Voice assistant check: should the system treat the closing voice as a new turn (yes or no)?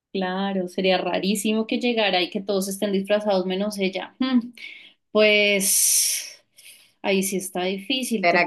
yes